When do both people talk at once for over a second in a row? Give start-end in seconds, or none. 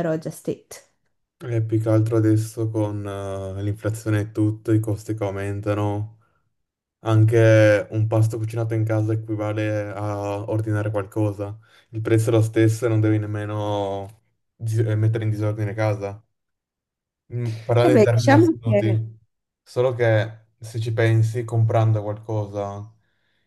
17.8-19.0